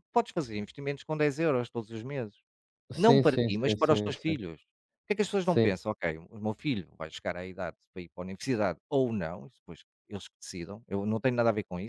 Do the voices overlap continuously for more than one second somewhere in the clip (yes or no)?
yes